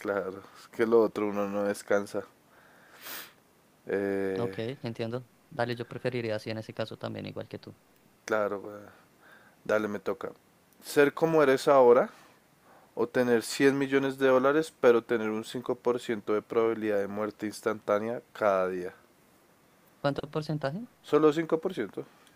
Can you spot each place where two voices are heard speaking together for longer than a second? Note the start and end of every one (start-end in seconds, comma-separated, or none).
none